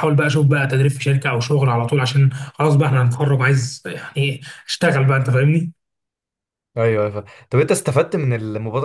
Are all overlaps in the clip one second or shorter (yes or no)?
yes